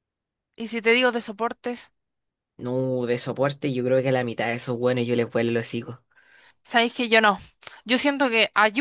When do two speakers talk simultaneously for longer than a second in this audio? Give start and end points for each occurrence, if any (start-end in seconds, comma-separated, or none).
none